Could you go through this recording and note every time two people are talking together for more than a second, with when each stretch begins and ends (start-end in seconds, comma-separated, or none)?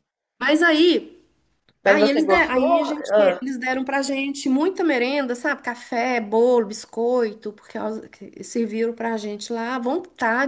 1.8-3.4